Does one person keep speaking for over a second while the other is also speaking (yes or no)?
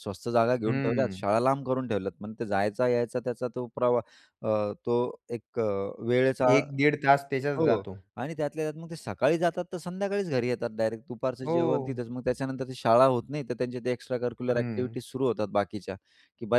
no